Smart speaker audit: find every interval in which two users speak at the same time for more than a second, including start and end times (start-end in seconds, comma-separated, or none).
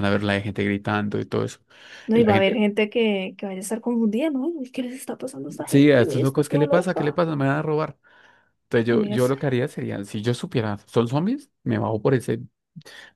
5.7-7.2